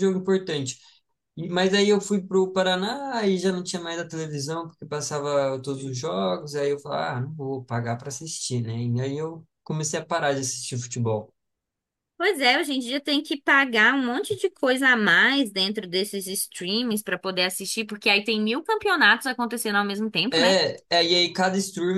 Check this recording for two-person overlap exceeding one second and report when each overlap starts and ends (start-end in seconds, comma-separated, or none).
none